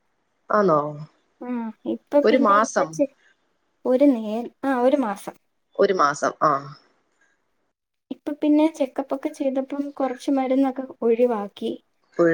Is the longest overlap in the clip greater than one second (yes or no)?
no